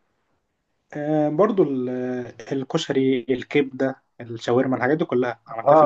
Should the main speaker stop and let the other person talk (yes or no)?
yes